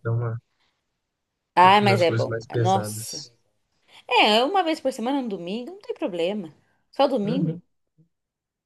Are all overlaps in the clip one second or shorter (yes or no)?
no